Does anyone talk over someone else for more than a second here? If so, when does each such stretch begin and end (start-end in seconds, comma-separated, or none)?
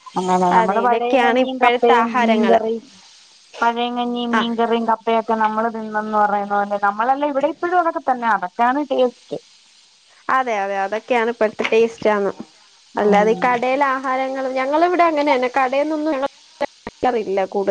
0.6-2.6